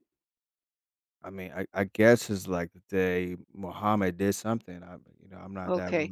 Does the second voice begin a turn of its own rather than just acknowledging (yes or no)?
yes